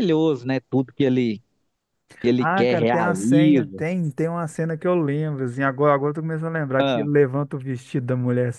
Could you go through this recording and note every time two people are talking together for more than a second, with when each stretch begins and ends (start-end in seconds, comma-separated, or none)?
2.4-3.8